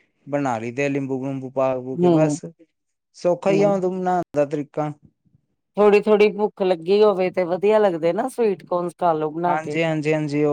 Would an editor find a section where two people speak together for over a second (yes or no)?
no